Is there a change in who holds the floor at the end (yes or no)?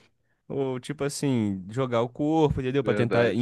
no